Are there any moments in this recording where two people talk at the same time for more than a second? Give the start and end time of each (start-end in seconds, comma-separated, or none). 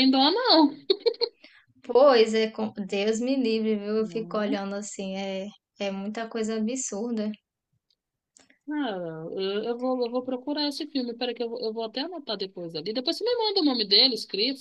none